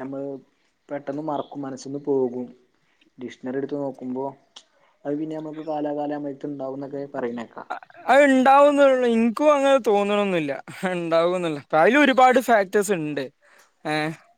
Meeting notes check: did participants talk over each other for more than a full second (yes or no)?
no